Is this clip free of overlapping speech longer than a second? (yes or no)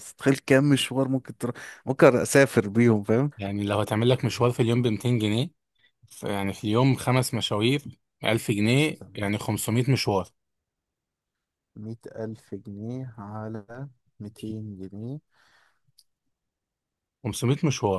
yes